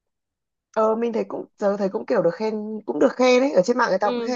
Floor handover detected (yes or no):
yes